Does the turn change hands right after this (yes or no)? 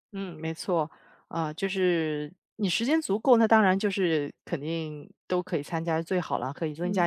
no